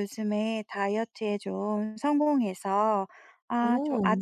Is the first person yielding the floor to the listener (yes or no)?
no